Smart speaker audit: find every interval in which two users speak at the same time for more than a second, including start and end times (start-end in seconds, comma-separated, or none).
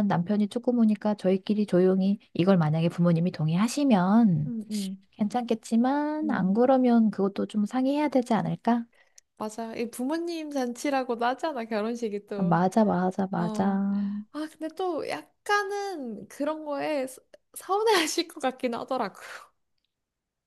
none